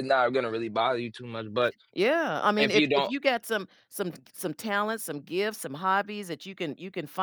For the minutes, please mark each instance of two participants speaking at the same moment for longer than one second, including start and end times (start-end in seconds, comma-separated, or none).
none